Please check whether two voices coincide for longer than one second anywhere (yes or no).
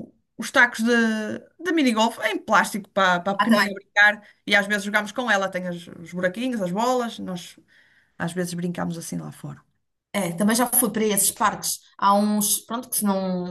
no